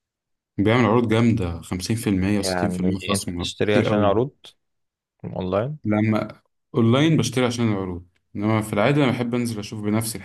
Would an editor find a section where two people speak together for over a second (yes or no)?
yes